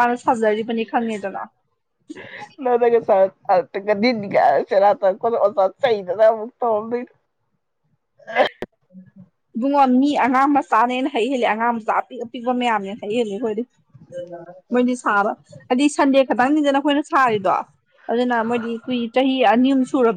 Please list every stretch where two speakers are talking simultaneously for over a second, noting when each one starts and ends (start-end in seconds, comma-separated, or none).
none